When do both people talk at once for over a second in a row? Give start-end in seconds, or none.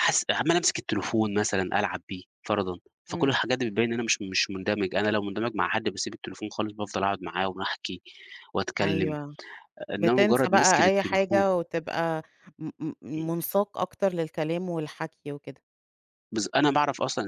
10.0-11.4